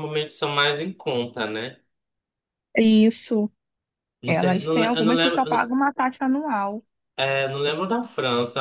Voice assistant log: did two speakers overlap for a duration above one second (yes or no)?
yes